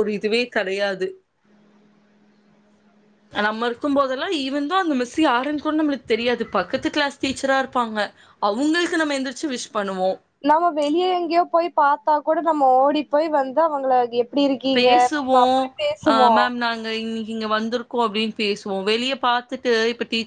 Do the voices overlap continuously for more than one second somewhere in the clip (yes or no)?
no